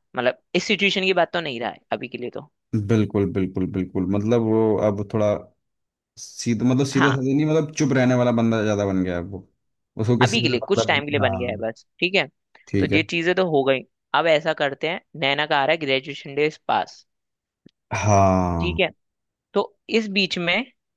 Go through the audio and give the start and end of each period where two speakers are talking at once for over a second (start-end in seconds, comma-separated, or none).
10.2-11.6